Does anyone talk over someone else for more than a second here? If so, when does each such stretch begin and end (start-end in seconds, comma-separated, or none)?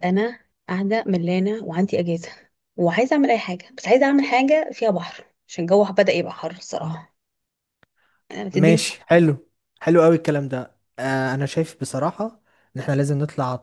none